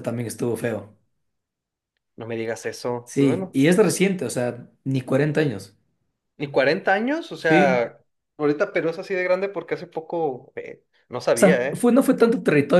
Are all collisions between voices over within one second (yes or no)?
yes